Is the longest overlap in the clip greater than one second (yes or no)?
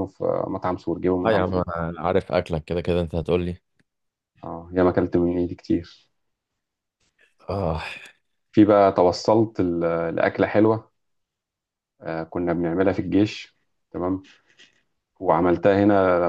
no